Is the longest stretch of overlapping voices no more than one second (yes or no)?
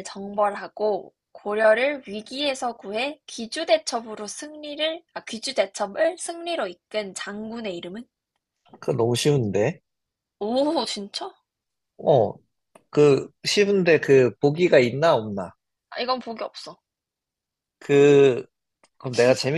yes